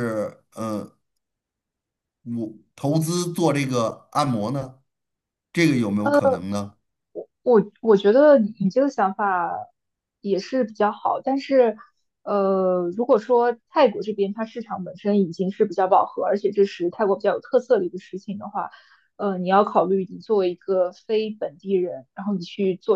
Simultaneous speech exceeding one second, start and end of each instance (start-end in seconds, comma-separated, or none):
none